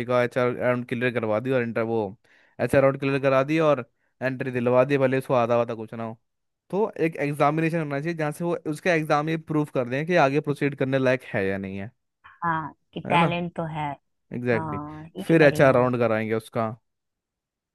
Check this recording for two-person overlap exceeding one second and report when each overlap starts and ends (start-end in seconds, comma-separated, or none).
14.5-15.9